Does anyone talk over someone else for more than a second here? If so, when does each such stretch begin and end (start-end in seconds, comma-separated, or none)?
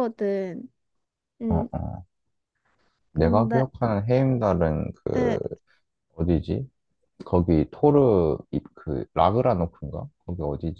none